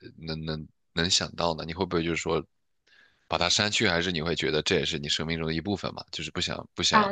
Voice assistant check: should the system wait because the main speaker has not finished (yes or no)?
no